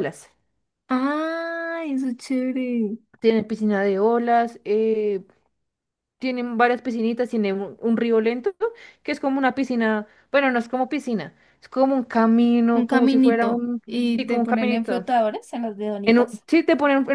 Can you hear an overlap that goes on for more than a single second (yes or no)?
yes